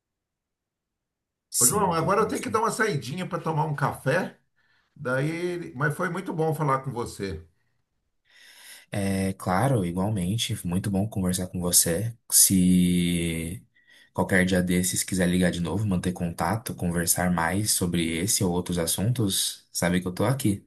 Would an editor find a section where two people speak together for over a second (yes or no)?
no